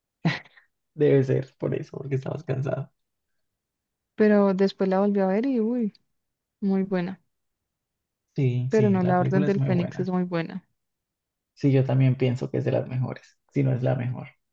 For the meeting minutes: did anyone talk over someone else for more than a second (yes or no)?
yes